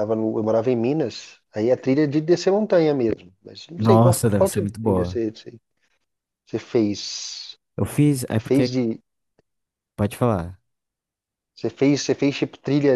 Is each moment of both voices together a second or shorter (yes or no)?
no